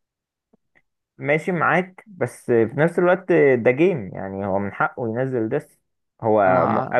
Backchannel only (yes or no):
yes